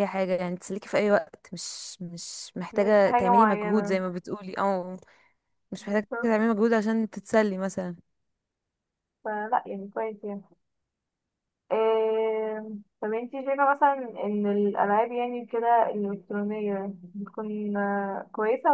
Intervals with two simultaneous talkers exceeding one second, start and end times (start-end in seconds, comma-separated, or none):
2.7-4.0